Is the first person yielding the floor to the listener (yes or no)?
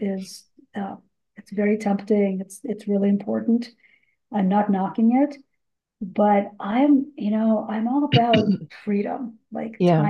no